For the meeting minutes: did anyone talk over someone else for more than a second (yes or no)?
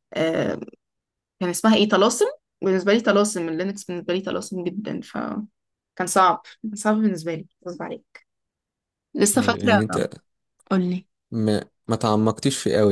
no